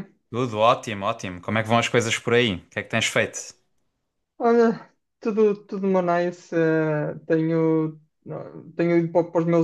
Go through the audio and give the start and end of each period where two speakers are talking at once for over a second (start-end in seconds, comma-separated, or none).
none